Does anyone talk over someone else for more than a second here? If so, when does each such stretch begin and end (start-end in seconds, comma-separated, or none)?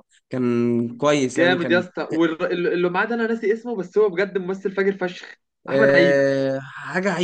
none